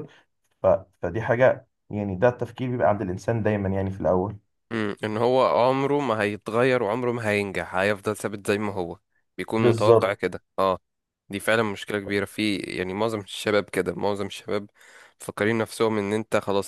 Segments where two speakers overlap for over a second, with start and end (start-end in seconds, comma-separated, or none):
none